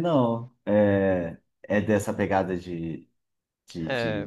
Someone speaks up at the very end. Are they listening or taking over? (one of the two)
taking over